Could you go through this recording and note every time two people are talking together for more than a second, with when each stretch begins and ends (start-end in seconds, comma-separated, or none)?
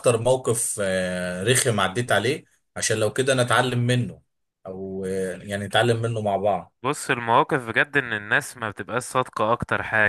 none